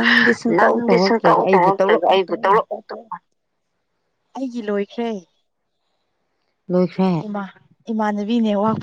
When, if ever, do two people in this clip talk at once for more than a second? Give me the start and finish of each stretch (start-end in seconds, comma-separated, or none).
0.6-2.2